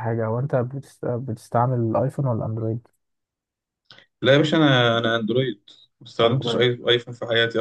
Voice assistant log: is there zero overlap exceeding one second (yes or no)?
yes